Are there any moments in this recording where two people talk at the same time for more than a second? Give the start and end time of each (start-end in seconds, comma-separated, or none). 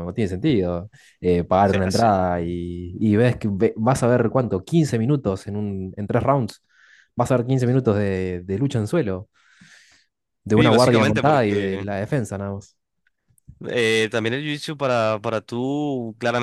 10.6-11.8